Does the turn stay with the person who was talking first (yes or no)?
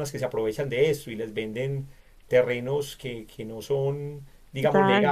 yes